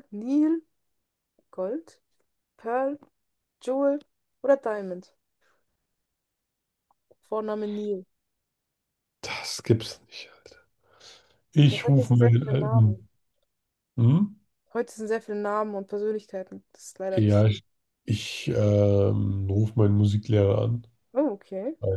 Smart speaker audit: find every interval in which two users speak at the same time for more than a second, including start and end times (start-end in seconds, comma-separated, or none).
11.7-13.0